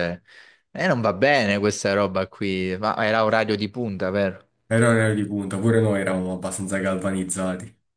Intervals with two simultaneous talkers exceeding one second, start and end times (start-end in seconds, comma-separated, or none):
none